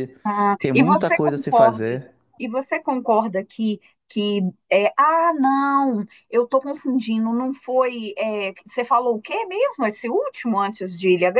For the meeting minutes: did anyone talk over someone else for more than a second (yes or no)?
yes